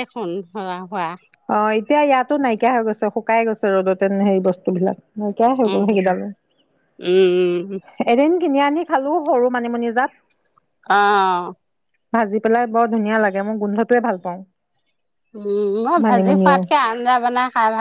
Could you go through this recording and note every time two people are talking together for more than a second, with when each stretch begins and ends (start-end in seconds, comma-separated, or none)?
none